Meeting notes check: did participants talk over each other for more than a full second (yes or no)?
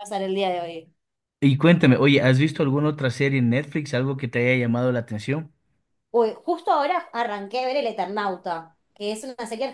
no